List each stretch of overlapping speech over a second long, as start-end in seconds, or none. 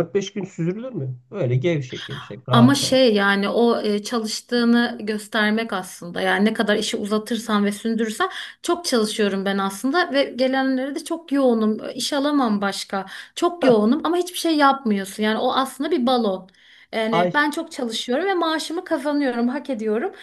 none